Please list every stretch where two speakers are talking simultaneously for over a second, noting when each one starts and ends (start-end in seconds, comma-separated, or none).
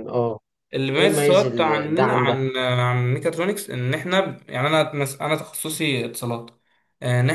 1.0-2.4